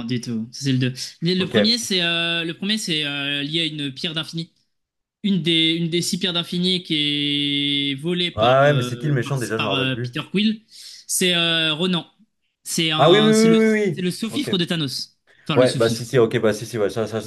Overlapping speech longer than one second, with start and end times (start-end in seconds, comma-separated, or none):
8.4-10.2